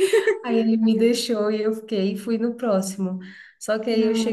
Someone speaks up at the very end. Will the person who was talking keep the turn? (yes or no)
yes